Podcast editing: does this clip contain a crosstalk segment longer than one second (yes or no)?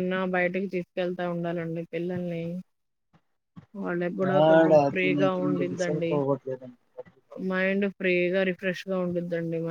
yes